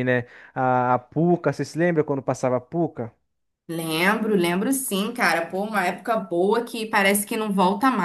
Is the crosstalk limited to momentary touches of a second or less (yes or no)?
yes